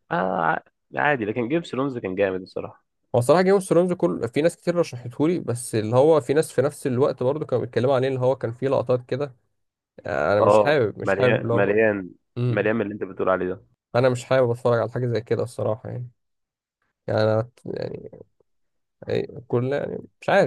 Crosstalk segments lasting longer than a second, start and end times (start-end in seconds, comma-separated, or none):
10.4-11.8